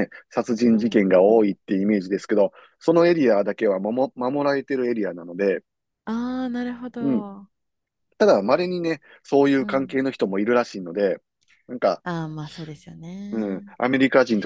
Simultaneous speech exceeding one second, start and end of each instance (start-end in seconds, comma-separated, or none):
0.7-2.2